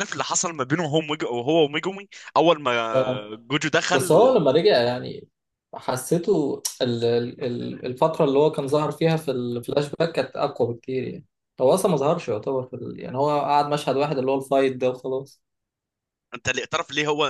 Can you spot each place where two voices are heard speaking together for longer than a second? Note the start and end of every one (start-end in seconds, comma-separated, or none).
none